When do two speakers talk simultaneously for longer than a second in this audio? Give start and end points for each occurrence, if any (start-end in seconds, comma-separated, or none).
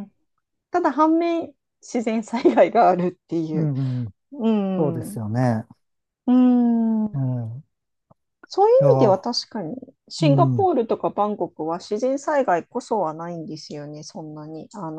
none